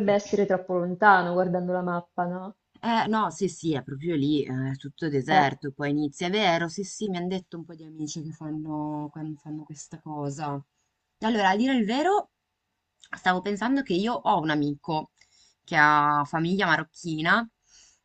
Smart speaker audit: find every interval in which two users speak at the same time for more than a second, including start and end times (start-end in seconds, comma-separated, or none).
none